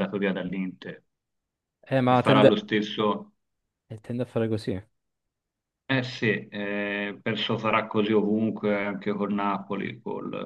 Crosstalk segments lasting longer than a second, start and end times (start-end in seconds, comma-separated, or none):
none